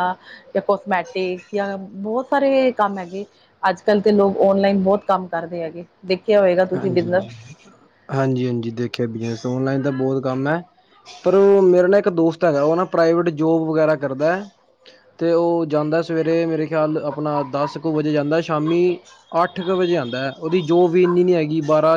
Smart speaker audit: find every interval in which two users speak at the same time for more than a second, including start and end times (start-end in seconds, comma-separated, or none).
none